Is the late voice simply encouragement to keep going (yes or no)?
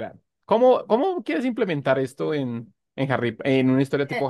no